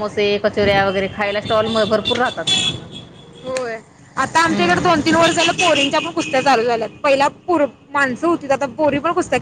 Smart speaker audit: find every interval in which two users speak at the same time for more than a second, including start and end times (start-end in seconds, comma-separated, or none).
none